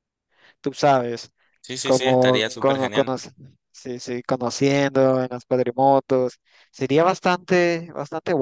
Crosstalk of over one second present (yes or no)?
yes